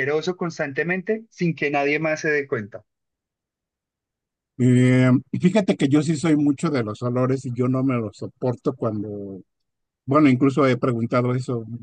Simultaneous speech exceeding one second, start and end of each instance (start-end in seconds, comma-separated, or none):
none